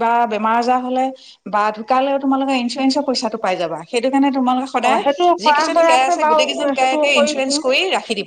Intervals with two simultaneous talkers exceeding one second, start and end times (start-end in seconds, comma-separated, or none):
5.4-7.6